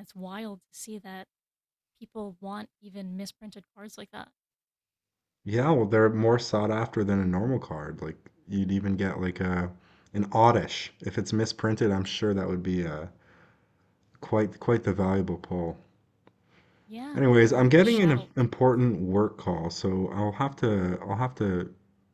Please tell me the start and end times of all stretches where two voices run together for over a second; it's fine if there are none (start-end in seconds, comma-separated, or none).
17.1-18.8